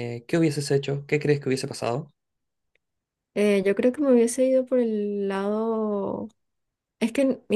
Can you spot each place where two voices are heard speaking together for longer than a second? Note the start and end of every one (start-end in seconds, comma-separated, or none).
none